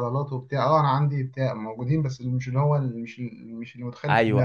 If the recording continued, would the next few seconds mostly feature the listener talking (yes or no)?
yes